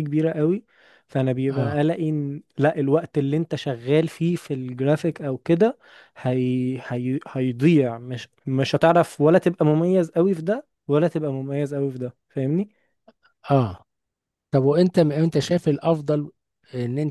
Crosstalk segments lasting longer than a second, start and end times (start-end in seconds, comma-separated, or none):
none